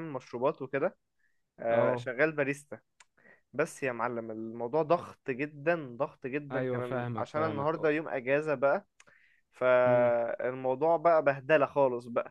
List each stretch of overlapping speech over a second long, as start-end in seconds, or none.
6.5-7.9